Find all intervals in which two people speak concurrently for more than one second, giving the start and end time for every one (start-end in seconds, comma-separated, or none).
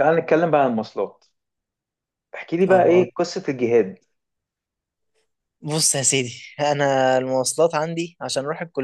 none